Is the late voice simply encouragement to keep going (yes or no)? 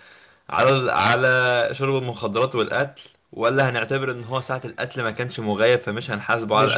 no